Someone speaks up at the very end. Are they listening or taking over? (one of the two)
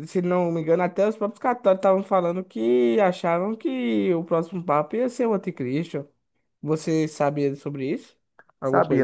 taking over